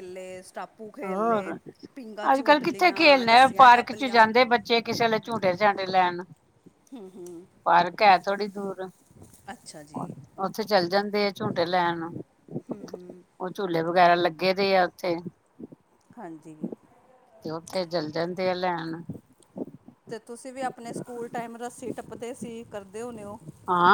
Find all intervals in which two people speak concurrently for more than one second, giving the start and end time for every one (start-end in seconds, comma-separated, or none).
2.6-4.2